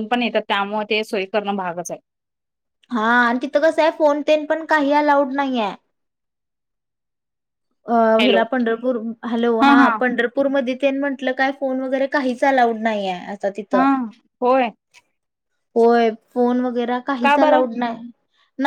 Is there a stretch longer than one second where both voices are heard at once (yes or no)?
no